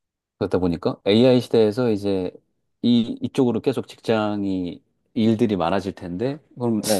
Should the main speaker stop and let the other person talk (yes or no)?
no